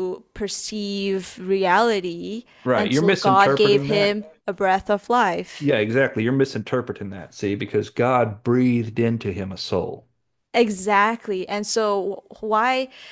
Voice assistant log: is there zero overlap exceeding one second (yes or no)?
no